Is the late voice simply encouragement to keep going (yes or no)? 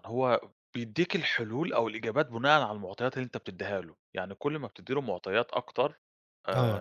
yes